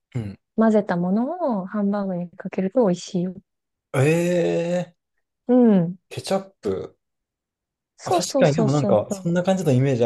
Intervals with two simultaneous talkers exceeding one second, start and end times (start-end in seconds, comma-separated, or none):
8.0-9.3